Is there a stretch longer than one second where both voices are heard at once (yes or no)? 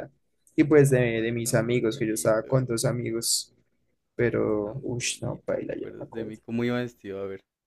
yes